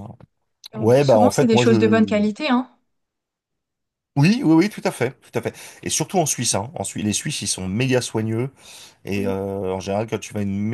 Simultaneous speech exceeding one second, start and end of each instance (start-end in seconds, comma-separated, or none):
0.8-2.2